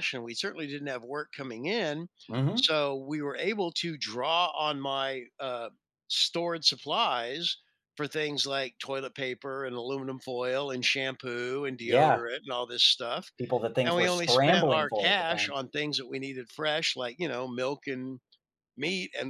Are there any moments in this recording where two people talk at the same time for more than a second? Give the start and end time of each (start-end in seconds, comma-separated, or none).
13.9-15.6